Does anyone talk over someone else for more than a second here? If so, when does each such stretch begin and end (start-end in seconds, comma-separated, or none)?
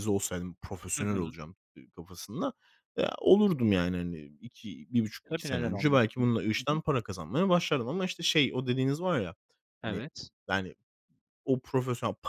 5.3-6.8